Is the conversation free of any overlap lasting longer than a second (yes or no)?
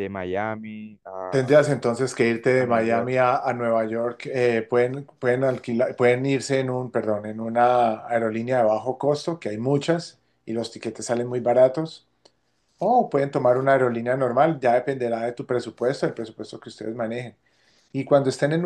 yes